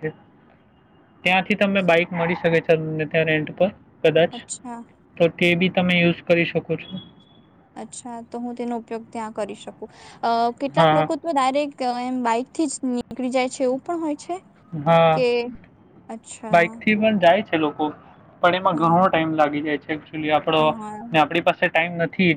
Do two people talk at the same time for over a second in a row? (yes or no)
no